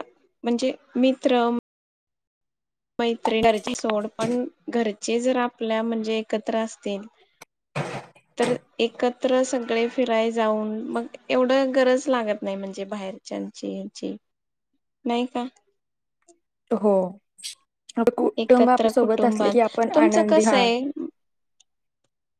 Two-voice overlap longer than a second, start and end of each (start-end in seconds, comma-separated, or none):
18.4-20.6